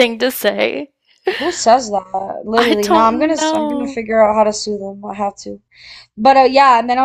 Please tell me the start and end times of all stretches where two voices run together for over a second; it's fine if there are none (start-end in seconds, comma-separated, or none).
2.6-4.0